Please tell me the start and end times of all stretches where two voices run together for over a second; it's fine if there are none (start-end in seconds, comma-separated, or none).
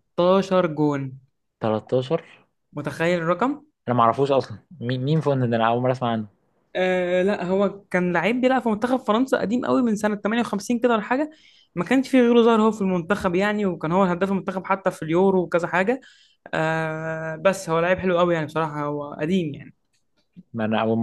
none